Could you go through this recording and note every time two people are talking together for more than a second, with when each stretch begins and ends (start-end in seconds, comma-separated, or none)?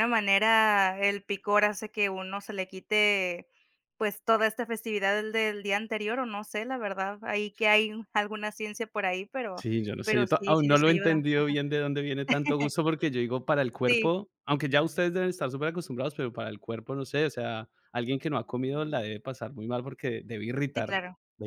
9.6-11.2